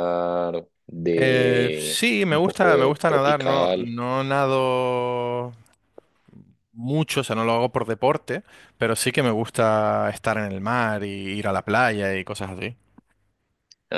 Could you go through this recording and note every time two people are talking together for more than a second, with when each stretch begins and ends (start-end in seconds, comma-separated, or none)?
1.2-3.9